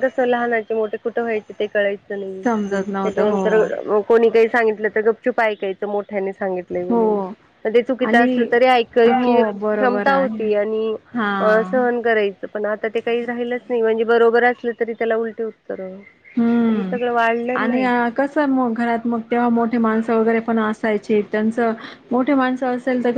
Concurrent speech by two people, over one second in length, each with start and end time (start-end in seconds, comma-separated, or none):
9.1-10.4